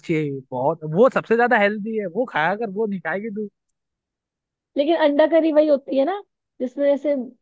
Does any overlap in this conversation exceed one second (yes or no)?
no